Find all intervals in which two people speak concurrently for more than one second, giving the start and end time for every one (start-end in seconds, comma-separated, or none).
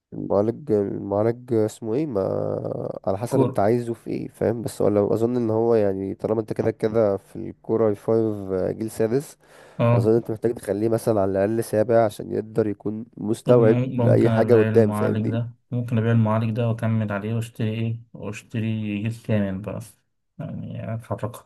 13.4-15.4